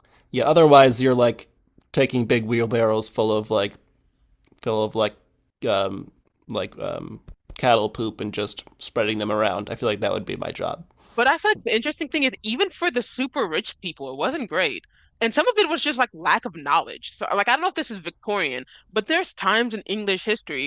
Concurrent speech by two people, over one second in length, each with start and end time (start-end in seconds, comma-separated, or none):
none